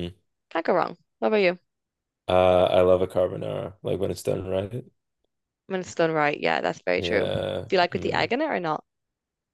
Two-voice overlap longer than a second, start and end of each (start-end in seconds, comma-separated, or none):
7.0-8.3